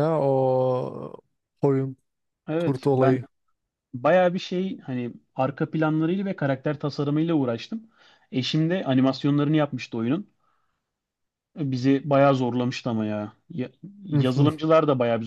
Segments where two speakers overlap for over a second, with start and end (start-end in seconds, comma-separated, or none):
none